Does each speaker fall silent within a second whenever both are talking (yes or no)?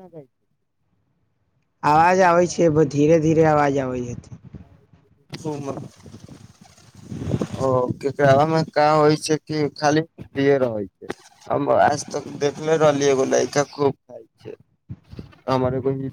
no